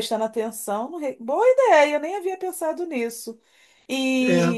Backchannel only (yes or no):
yes